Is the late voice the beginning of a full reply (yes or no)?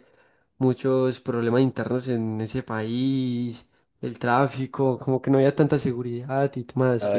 yes